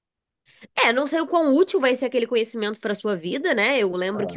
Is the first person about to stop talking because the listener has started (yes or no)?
no